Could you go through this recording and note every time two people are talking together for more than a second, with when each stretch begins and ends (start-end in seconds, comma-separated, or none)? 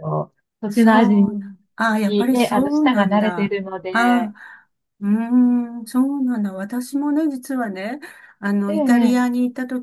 2.0-4.3